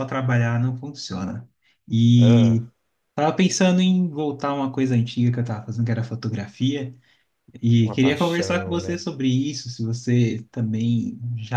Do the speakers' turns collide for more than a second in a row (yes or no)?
yes